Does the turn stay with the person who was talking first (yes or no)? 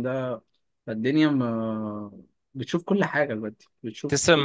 no